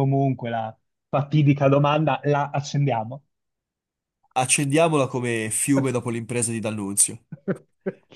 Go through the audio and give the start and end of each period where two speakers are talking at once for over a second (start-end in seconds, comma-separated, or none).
none